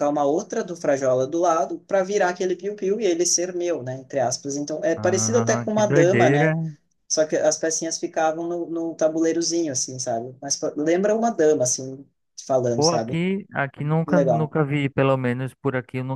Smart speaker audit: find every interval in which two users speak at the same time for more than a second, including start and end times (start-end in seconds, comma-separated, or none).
5.0-6.5